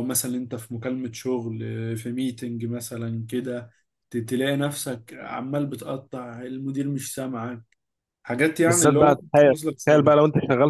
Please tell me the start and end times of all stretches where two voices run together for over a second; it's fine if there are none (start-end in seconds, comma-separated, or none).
8.7-10.2